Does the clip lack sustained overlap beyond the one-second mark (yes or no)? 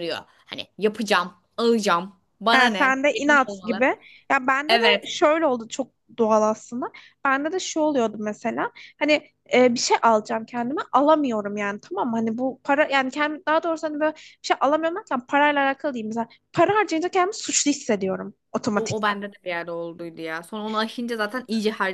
no